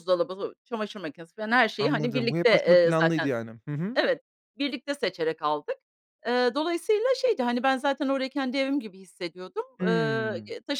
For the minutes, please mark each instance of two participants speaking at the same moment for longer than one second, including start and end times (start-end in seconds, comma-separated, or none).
1.8-3.3